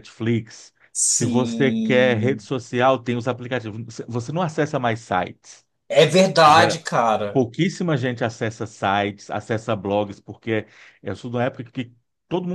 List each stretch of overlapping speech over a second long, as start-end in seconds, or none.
1.1-2.5